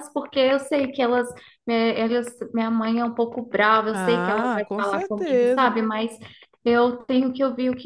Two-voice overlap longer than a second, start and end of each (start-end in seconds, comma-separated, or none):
3.9-5.7